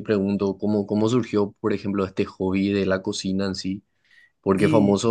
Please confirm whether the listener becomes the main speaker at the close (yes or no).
no